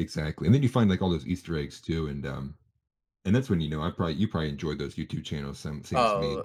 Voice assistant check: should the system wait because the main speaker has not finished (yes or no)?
no